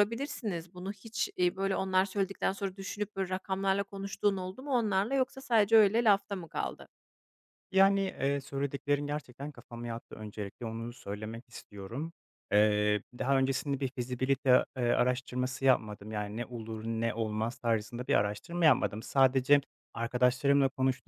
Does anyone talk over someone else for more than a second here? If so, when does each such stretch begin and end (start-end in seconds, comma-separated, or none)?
none